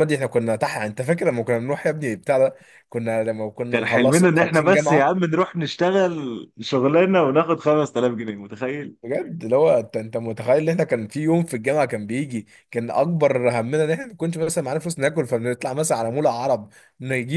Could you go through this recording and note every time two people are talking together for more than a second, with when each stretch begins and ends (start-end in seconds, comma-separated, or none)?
3.7-5.1